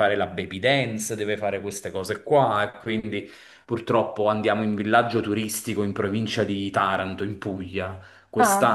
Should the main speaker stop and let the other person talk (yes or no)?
no